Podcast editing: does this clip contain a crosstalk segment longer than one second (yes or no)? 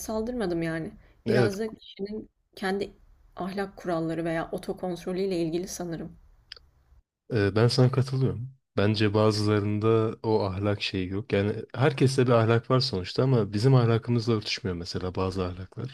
no